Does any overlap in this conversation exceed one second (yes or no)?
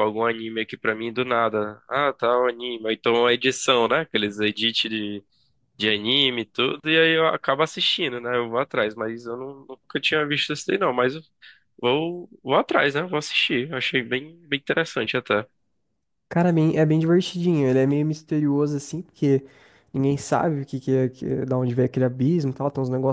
no